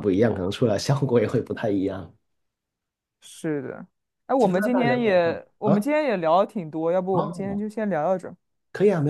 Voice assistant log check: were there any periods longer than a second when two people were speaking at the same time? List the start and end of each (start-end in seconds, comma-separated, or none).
4.4-5.9